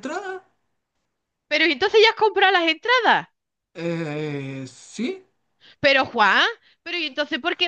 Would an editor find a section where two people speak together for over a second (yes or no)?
no